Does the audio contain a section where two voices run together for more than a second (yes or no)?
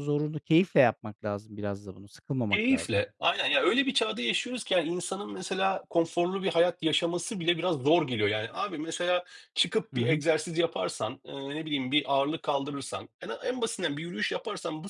no